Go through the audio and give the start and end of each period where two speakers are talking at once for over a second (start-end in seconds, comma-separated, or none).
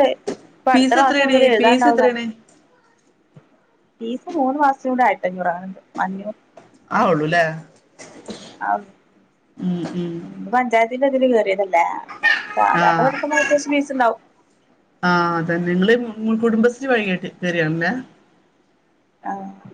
0.7-2.2